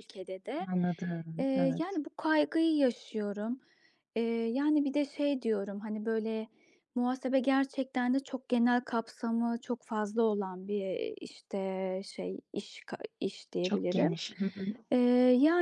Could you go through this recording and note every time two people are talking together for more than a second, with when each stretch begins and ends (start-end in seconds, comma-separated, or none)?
none